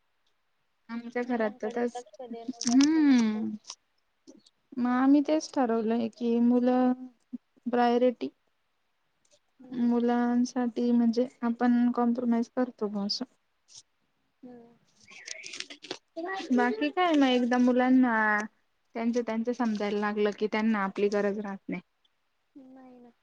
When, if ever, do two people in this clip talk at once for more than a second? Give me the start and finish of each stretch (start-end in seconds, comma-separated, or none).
1.3-3.5